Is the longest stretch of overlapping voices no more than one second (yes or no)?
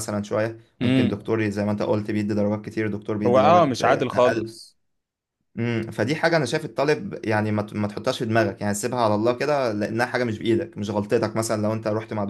no